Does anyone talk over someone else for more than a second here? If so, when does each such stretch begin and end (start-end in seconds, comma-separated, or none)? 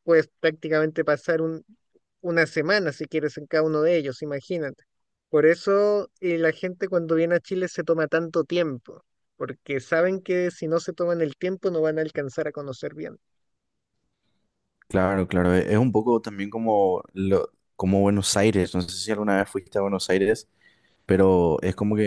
none